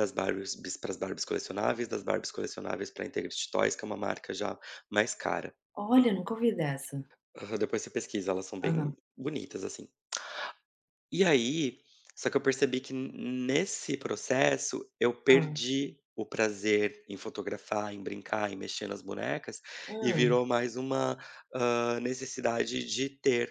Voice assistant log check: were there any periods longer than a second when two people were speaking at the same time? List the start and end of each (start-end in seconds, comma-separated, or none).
none